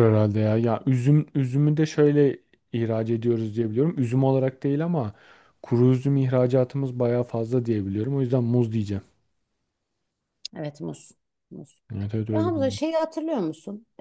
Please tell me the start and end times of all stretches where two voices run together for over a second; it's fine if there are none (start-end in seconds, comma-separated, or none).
none